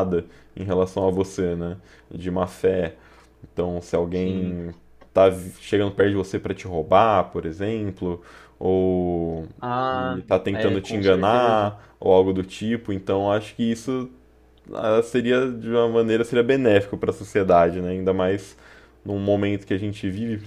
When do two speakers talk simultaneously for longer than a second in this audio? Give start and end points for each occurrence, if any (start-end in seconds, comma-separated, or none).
9.9-11.7